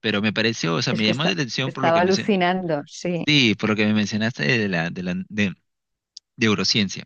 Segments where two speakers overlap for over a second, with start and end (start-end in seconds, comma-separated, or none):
0.9-2.4